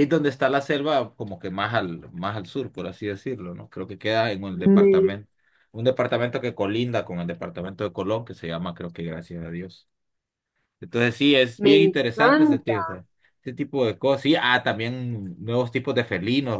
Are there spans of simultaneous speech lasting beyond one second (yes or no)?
yes